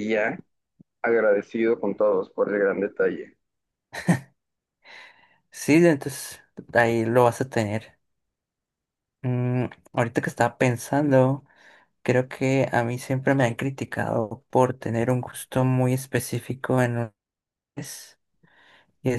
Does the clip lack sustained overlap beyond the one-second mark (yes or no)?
yes